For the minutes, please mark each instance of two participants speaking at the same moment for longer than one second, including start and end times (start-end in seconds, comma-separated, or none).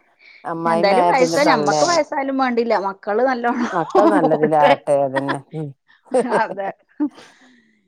0.7-2.0